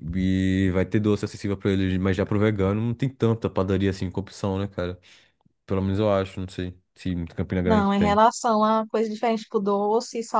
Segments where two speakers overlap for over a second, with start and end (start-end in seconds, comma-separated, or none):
none